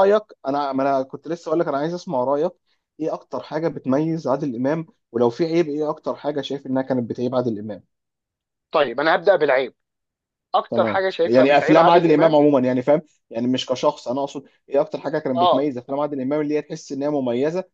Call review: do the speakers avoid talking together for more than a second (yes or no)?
no